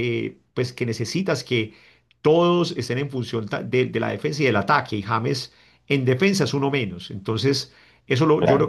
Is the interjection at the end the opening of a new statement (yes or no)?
no